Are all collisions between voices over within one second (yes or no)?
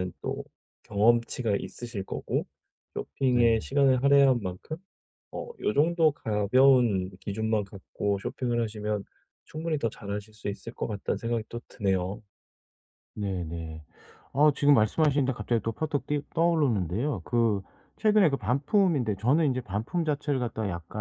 yes